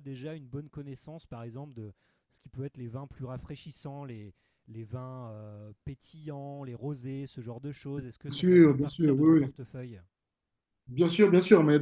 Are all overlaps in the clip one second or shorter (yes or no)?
no